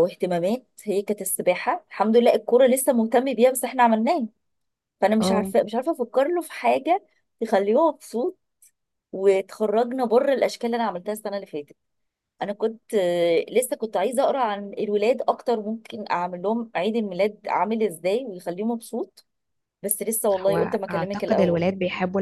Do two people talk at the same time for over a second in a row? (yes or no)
yes